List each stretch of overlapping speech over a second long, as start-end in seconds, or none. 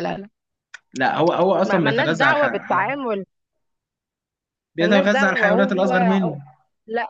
1.6-3.0, 4.8-6.4